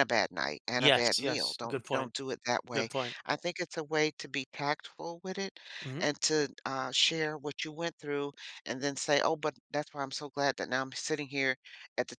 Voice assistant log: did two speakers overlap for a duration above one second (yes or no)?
yes